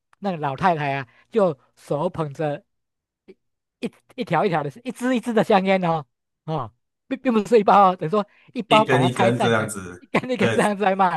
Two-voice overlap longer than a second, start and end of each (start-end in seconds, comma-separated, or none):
8.7-10.6